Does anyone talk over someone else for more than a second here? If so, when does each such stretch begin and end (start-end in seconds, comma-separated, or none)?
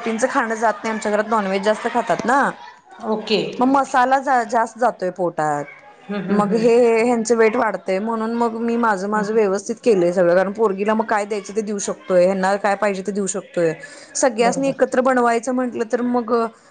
none